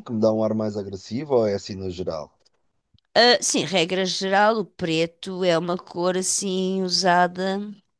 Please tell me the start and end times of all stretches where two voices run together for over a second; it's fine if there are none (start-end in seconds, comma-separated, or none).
none